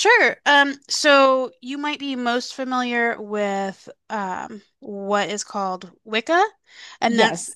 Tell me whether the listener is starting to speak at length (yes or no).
no